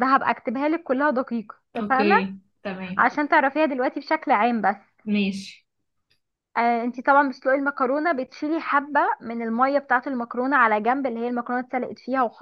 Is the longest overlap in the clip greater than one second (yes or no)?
no